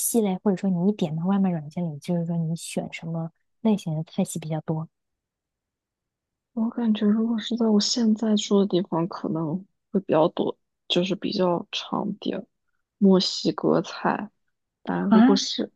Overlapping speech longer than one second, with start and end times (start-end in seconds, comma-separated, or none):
none